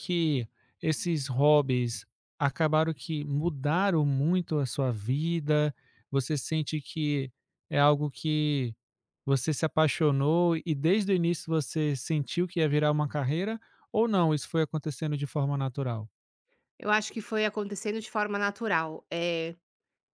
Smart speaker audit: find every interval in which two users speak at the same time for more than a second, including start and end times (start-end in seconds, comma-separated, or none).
none